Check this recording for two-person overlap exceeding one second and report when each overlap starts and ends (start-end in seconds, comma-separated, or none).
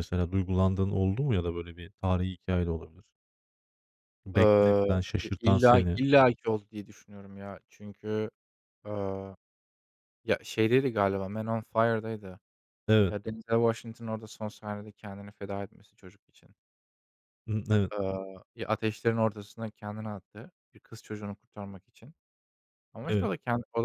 4.3-6.0